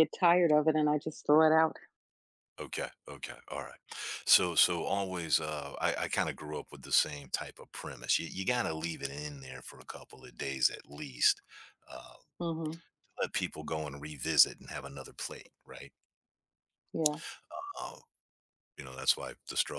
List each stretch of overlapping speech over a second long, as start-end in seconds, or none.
none